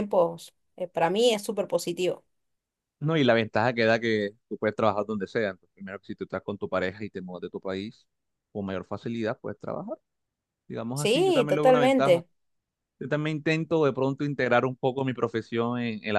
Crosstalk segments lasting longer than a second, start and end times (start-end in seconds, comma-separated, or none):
10.9-12.2